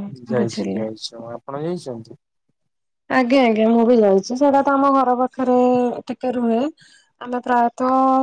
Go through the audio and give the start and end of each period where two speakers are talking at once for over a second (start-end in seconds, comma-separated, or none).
none